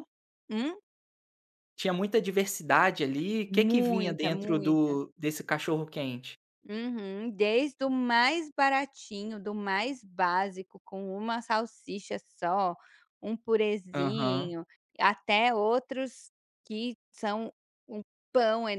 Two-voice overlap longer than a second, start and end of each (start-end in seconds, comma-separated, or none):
3.6-4.9